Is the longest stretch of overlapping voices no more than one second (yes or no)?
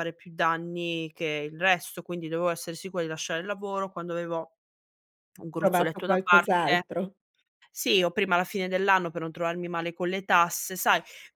no